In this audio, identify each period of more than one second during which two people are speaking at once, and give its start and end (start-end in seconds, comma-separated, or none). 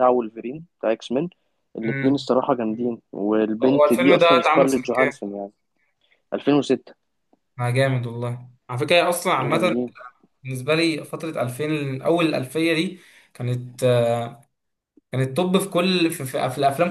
3.6-5.2